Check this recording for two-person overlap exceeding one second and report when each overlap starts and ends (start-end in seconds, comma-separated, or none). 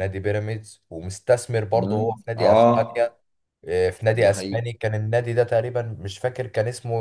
1.7-3.2